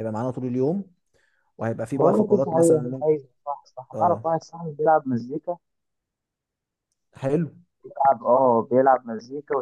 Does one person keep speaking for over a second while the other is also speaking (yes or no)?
yes